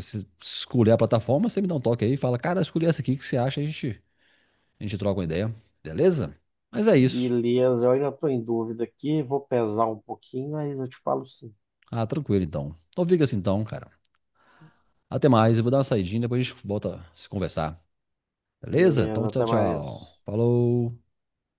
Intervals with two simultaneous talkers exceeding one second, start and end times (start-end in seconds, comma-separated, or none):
18.7-20.2